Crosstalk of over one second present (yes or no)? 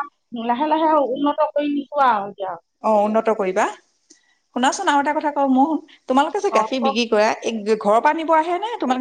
no